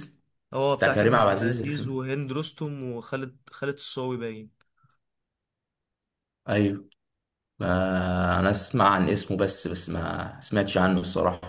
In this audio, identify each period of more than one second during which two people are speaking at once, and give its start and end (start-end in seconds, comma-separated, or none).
0.8-2.0